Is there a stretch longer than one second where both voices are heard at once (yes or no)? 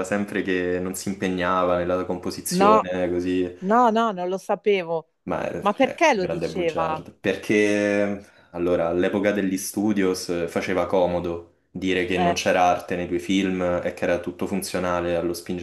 yes